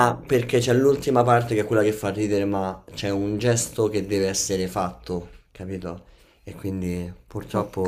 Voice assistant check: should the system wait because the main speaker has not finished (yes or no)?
yes